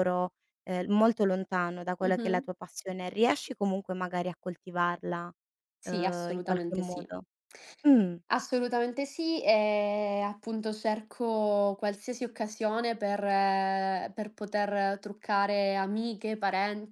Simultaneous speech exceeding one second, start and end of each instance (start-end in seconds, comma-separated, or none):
5.8-7.1